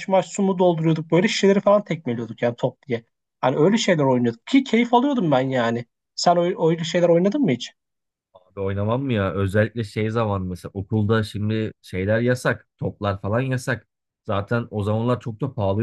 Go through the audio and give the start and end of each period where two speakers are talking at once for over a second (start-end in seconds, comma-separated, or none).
none